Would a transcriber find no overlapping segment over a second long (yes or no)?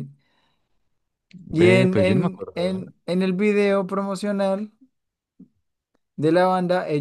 no